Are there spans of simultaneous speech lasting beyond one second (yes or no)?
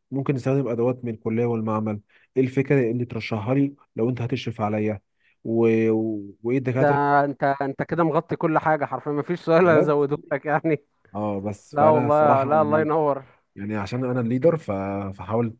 yes